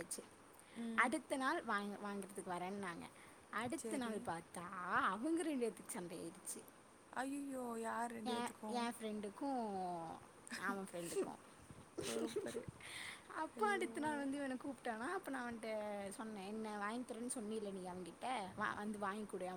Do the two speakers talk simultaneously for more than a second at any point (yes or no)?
no